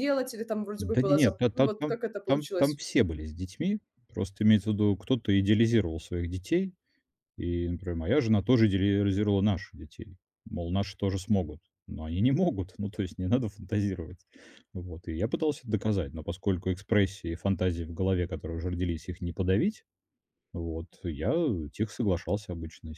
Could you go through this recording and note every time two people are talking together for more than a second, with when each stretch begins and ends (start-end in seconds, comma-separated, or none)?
0.8-2.8